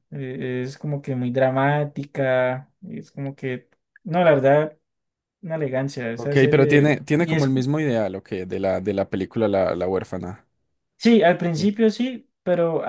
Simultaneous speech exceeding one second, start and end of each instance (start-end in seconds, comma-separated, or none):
6.2-7.5